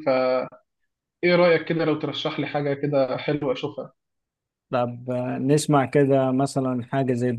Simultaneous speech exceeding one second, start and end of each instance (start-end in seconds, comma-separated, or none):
none